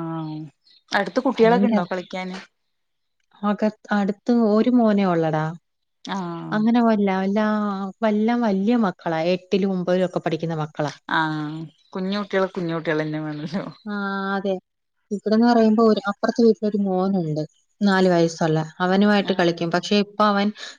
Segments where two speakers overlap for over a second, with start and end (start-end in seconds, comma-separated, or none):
none